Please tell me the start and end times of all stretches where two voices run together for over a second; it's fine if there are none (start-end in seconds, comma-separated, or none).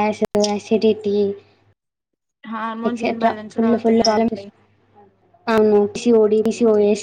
2.9-4.4